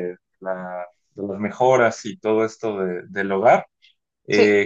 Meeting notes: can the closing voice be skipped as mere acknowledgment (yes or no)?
yes